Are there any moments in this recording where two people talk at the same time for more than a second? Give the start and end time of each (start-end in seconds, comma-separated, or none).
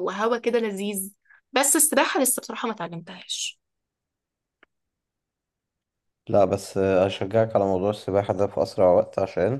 none